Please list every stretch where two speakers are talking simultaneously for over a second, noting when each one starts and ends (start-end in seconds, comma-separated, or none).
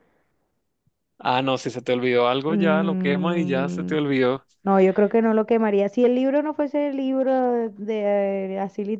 2.5-4.0